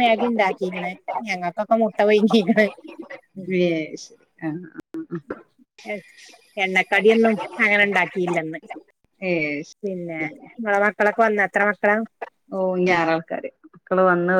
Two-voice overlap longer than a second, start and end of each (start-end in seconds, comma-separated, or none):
none